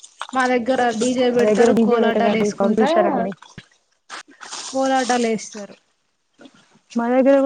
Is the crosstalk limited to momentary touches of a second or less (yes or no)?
no